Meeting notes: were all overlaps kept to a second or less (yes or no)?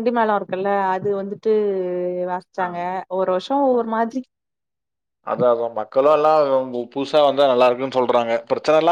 yes